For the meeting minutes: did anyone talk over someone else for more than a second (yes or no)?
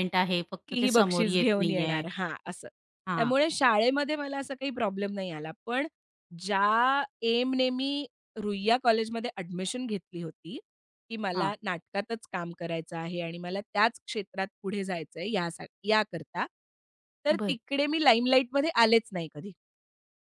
yes